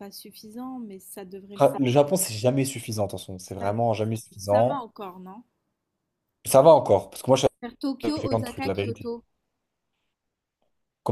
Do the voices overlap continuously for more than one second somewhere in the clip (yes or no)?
yes